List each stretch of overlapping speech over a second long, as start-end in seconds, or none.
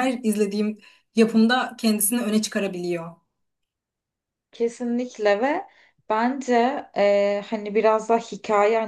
none